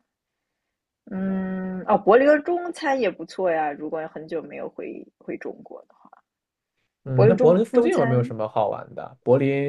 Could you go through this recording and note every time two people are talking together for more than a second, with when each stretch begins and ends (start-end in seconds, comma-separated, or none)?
7.2-8.3